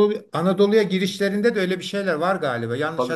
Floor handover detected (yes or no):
no